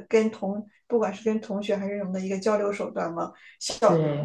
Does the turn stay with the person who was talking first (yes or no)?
yes